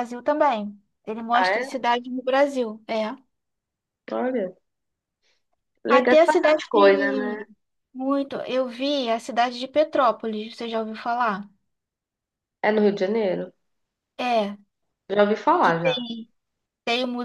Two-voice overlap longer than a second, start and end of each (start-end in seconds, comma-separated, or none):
5.9-7.5